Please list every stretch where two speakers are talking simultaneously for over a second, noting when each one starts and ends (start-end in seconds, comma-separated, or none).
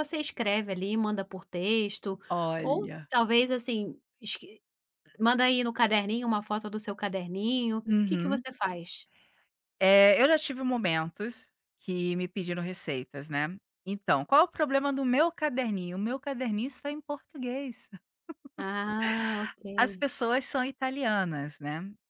none